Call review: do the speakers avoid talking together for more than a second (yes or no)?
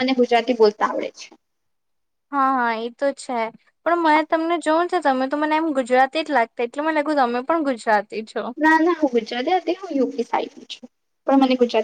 yes